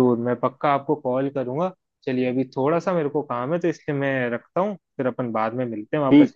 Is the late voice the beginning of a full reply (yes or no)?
yes